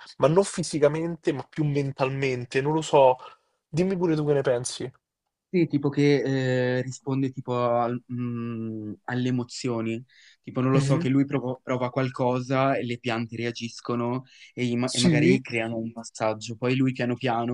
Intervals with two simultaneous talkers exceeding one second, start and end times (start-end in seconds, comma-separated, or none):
none